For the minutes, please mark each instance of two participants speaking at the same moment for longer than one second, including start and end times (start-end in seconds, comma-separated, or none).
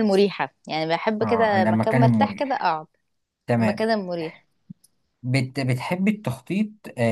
1.2-2.7